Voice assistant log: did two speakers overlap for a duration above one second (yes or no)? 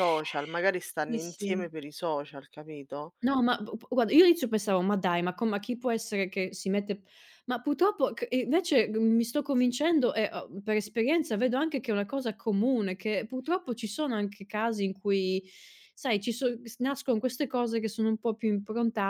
no